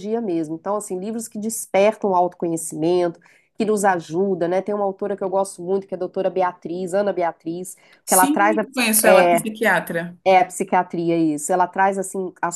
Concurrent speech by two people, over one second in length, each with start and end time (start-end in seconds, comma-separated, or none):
none